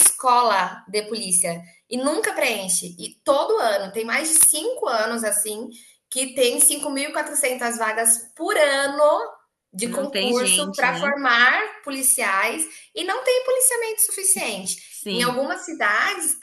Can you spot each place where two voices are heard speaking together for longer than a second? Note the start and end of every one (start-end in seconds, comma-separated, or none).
9.8-11.2